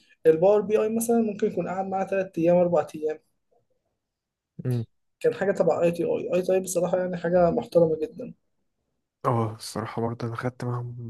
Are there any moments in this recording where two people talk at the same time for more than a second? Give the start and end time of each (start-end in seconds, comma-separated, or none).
none